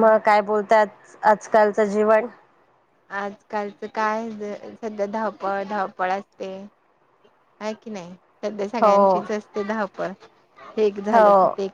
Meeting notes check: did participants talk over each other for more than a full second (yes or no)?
no